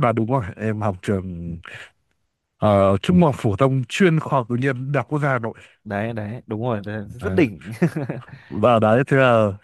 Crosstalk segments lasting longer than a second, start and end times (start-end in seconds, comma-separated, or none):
none